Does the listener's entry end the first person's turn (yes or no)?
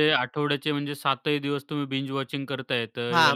yes